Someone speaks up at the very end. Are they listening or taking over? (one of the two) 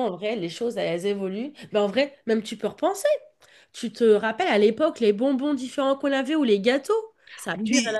taking over